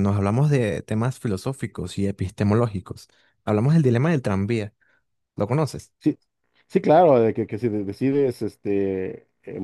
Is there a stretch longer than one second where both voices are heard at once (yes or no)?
no